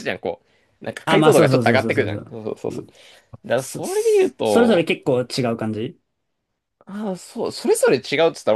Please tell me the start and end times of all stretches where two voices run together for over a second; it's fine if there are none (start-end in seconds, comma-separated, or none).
1.0-2.9